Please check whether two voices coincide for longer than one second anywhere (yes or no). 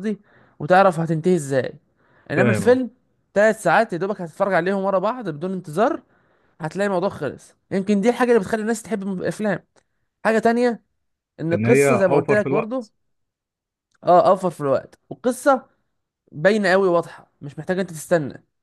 yes